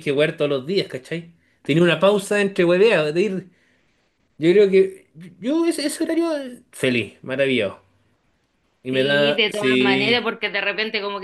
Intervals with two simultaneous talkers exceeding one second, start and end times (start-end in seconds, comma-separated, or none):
8.9-10.3